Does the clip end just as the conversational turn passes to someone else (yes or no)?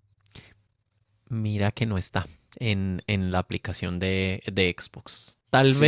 no